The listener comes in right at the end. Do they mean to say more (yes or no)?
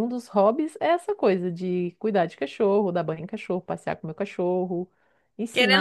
yes